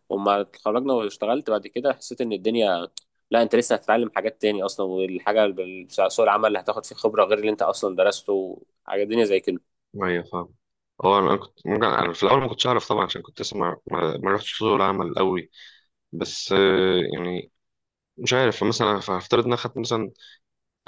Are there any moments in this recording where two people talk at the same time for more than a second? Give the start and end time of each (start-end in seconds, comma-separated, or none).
none